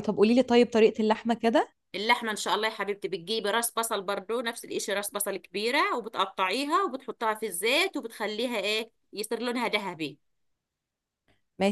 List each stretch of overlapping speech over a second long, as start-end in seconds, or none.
none